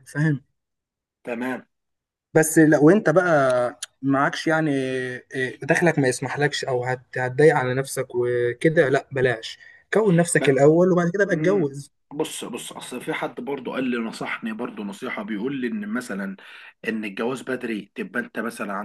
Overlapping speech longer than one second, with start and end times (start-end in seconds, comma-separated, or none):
none